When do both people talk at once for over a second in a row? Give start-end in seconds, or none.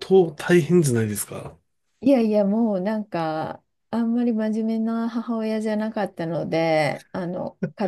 none